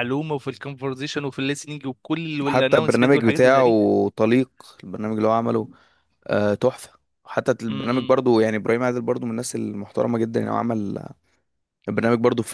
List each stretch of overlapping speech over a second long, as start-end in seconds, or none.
2.4-3.7